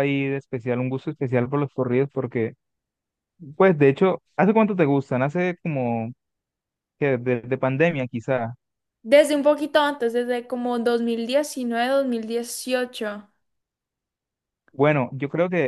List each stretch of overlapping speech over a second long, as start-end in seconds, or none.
none